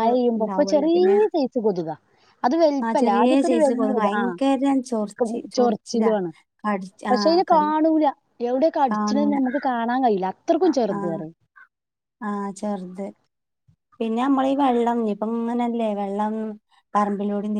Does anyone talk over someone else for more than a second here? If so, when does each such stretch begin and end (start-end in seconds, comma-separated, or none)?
2.9-6.1